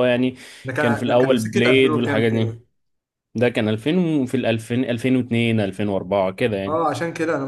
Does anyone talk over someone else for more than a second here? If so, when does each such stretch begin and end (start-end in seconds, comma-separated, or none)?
0.8-2.5